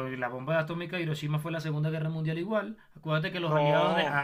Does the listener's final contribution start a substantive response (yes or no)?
no